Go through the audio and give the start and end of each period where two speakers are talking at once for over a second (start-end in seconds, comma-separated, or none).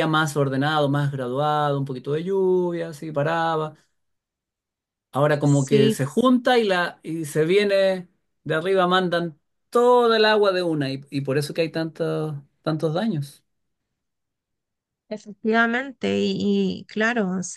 none